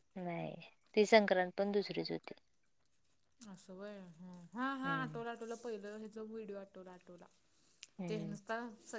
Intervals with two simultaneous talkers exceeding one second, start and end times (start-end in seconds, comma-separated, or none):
none